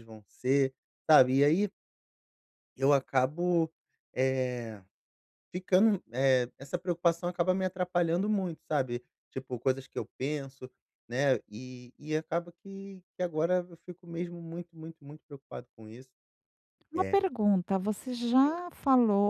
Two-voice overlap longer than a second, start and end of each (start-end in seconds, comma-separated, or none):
none